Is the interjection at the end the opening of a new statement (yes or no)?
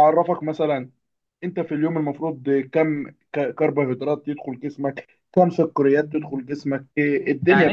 yes